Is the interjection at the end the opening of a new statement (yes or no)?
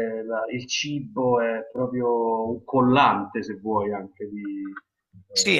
yes